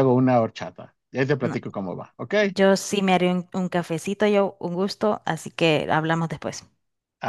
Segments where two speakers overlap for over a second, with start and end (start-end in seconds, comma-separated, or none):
none